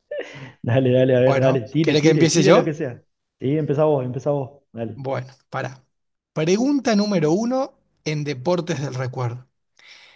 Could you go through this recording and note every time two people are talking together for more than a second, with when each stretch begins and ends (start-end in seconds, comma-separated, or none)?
1.2-2.8